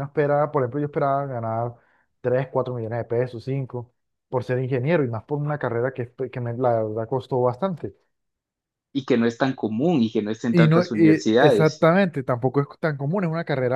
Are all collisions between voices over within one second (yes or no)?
no